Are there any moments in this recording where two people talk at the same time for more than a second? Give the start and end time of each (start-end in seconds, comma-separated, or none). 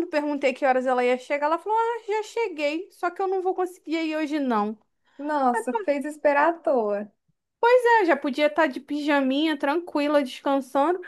none